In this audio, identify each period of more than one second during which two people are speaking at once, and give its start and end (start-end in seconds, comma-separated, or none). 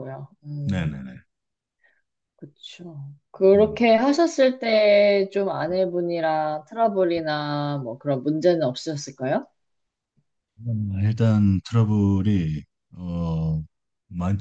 none